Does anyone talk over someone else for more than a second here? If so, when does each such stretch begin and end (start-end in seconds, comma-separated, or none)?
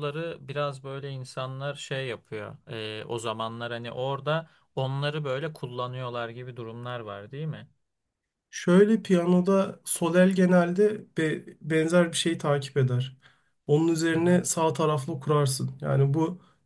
none